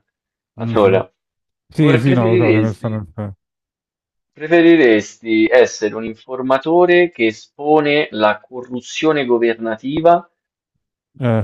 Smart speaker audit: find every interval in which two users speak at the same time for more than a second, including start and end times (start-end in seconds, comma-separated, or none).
1.8-3.0